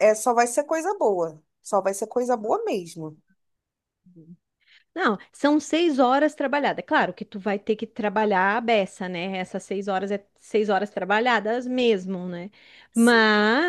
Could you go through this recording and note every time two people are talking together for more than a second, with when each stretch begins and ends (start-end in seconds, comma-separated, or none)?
none